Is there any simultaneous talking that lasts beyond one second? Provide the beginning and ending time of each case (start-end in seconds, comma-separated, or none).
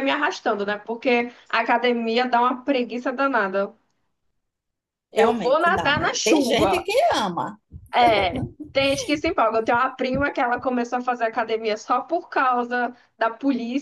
5.2-6.8